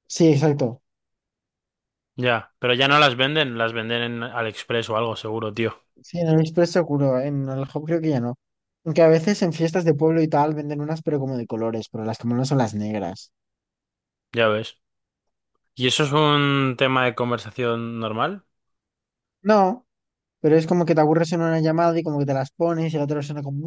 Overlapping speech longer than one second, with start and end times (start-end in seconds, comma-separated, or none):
none